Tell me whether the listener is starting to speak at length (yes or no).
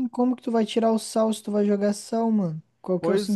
yes